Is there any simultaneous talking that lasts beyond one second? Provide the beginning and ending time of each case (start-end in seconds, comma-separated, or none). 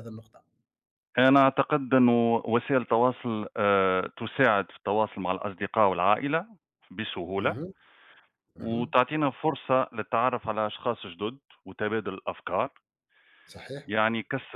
none